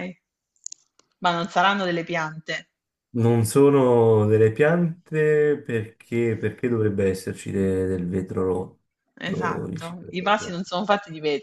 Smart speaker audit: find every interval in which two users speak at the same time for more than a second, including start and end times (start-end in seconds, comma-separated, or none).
9.2-10.6